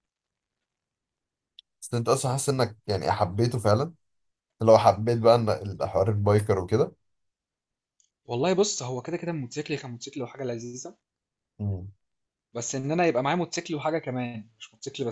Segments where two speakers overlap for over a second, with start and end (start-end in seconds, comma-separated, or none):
none